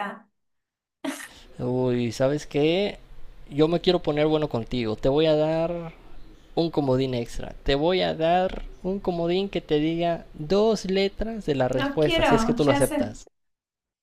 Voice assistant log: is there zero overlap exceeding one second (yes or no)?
no